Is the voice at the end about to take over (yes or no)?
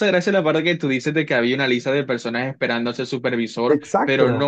no